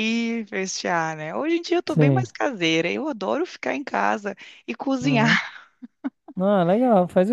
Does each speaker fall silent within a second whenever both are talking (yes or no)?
yes